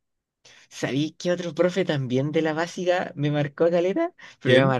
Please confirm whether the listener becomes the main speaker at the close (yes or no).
no